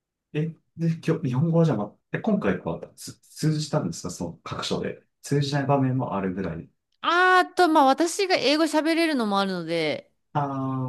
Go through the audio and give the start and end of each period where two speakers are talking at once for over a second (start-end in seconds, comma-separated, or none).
none